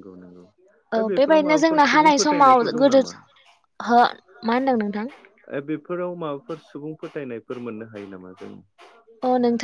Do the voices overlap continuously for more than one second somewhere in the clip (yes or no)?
yes